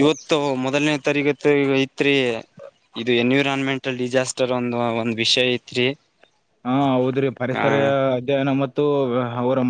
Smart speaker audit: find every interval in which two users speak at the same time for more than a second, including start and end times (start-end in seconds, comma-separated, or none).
none